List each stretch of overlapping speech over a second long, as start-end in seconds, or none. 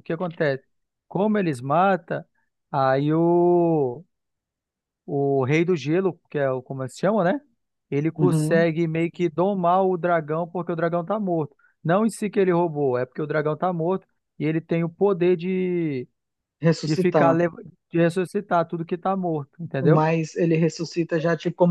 none